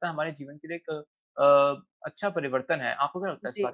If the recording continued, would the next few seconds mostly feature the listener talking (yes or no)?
yes